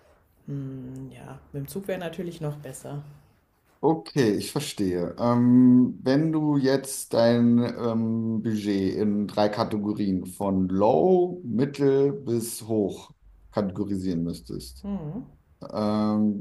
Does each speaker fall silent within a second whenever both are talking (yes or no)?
yes